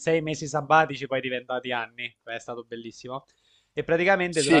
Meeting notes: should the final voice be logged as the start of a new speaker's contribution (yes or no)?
yes